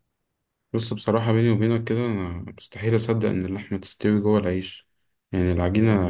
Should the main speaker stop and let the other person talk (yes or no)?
no